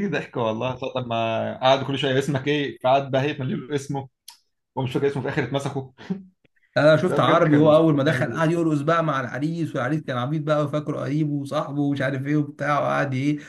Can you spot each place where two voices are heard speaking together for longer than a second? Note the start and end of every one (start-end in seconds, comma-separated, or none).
7.1-8.5